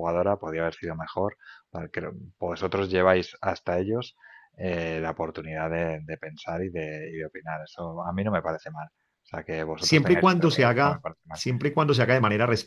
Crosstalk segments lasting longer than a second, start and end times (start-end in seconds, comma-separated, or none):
9.8-11.4